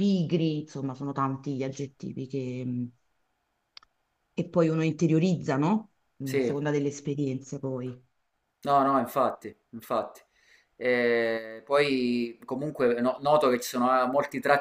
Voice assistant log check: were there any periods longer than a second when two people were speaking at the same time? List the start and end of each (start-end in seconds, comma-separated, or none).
none